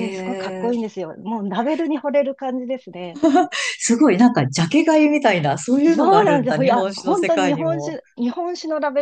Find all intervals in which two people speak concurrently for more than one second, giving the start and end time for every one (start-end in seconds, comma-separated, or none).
5.9-8.0